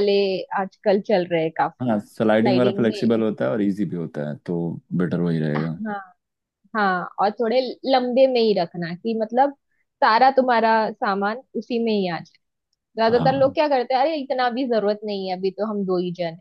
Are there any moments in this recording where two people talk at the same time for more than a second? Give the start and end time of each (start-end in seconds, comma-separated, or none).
1.8-3.1